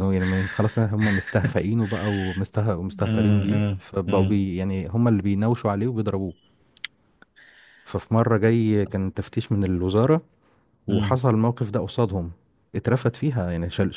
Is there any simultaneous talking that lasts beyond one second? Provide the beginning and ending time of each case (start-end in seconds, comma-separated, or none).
2.9-4.4